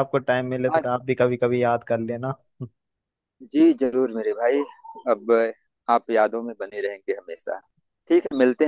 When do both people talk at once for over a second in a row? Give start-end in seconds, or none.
none